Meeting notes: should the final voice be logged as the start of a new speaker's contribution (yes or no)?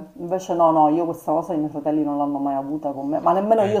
no